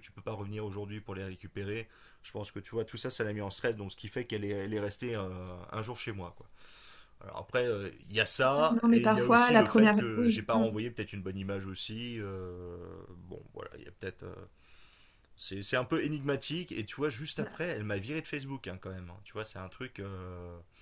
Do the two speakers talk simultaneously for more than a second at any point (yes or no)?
yes